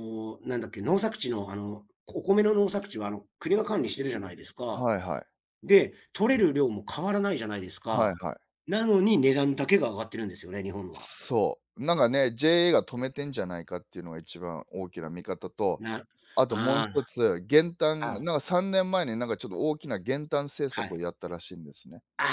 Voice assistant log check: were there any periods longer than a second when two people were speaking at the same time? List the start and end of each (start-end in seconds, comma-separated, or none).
none